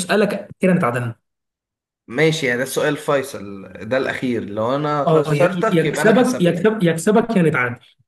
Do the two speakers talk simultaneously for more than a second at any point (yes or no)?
yes